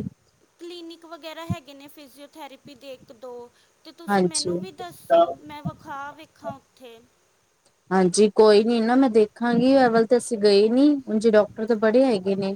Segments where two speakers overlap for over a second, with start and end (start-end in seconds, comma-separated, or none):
none